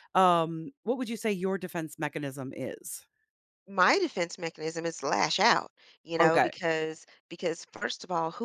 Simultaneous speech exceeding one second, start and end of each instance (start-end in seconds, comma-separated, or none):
none